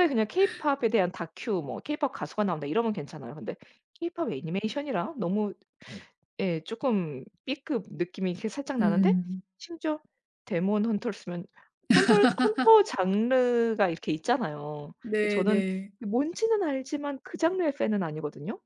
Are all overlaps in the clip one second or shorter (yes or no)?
yes